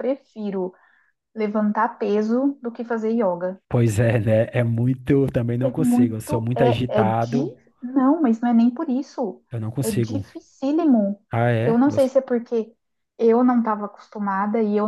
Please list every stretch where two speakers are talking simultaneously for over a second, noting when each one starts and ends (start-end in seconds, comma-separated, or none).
5.6-7.5